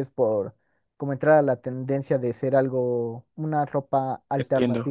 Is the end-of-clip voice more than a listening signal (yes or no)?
yes